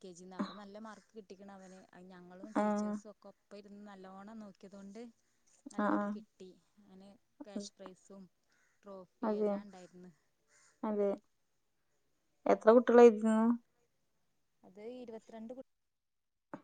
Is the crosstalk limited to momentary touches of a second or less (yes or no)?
yes